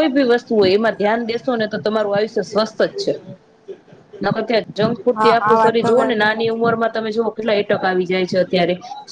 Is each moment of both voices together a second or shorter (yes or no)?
no